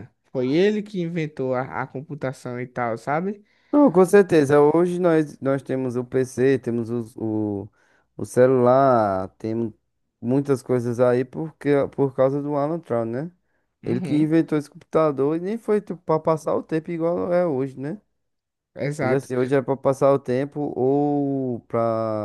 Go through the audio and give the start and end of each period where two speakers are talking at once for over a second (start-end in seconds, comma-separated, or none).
none